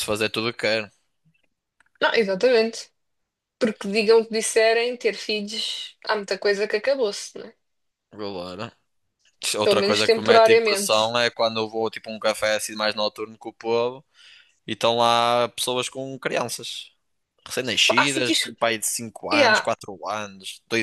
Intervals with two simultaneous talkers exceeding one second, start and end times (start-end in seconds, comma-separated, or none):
9.6-11.0